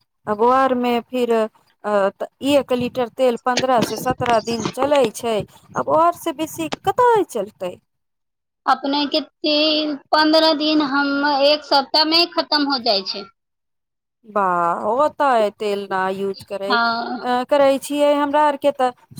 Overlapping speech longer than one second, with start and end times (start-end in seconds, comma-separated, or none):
none